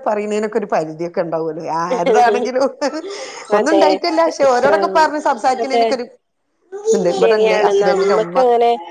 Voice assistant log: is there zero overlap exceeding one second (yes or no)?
yes